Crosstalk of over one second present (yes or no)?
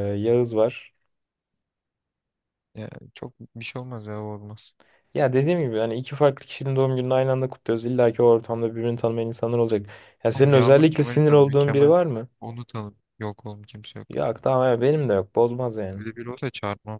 yes